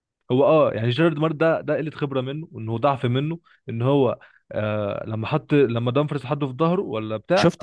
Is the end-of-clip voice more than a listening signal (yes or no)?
yes